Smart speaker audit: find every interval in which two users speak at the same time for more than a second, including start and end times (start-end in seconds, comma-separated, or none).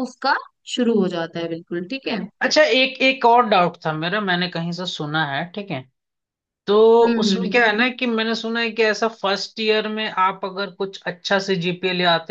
none